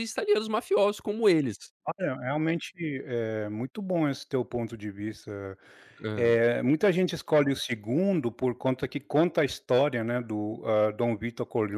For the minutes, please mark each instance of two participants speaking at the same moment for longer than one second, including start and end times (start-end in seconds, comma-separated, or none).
none